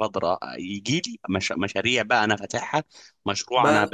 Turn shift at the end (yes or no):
no